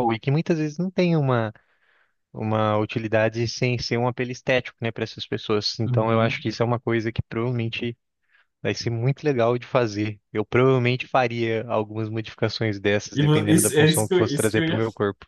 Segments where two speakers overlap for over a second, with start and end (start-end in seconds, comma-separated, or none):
13.1-14.8